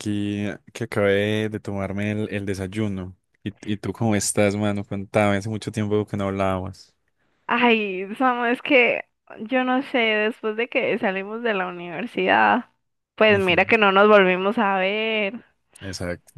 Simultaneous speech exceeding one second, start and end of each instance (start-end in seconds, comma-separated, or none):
none